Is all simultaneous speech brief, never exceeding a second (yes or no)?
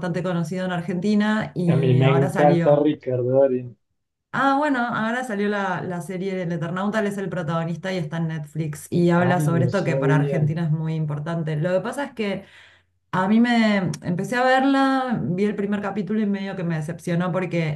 no